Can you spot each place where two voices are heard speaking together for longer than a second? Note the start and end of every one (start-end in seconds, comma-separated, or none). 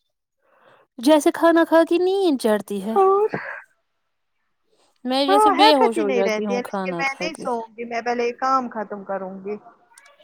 5.3-7.5